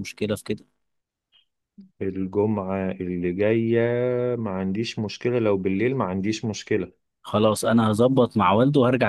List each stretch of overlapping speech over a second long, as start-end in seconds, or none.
none